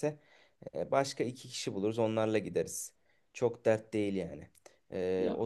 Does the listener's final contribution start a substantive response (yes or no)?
no